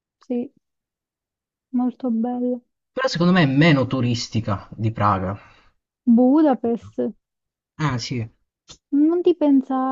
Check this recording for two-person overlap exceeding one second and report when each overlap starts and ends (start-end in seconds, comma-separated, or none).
none